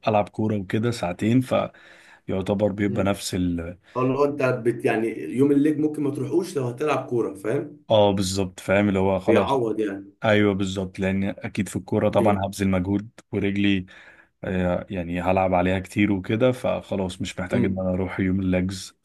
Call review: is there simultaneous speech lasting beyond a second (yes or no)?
no